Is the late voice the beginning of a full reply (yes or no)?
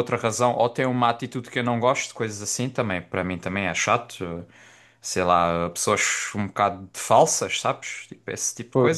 yes